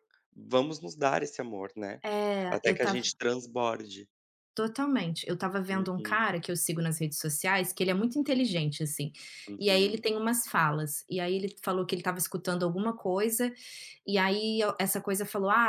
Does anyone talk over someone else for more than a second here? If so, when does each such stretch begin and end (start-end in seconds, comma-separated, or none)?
none